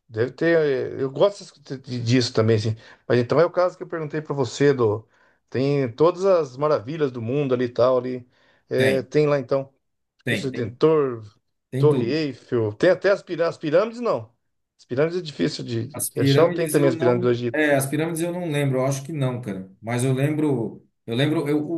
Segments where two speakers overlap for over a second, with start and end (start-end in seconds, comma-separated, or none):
15.9-17.7